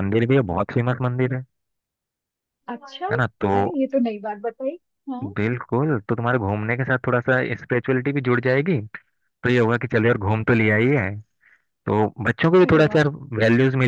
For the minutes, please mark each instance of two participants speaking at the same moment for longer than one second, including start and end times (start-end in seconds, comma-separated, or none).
none